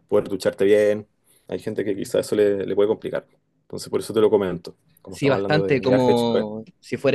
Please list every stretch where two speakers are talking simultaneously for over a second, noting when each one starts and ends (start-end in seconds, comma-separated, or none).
5.1-6.4